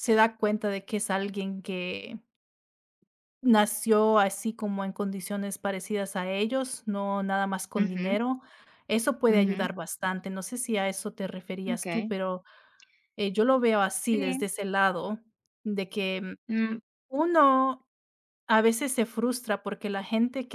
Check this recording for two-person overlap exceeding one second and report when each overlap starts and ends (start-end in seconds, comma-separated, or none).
none